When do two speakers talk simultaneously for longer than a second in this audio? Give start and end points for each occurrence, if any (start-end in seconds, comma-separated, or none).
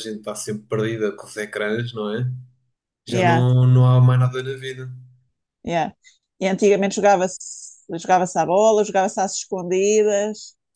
none